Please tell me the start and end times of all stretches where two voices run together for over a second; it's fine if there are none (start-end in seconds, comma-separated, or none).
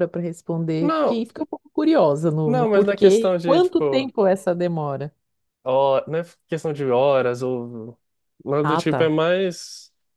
2.4-4.1